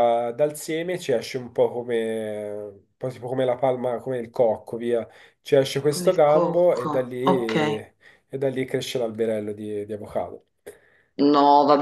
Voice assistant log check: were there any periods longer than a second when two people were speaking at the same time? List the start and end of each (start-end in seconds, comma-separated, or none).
5.9-7.8